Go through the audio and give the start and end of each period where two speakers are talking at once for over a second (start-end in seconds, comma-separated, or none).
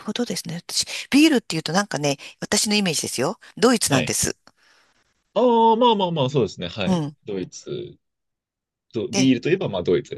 none